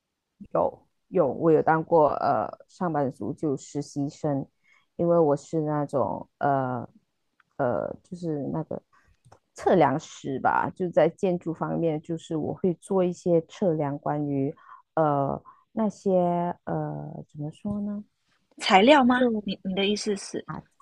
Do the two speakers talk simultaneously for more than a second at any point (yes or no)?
no